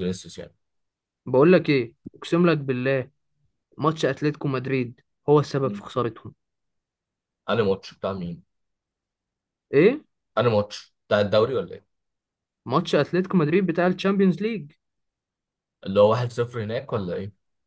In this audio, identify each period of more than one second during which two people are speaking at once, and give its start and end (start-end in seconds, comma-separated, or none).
none